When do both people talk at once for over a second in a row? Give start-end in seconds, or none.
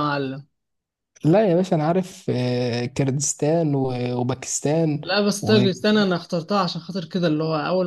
none